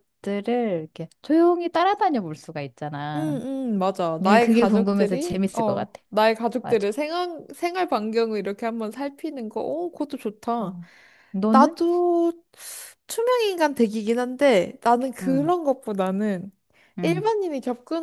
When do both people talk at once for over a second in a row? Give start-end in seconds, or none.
4.2-6.0